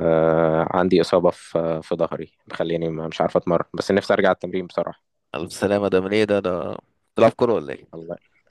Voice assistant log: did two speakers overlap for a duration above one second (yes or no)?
no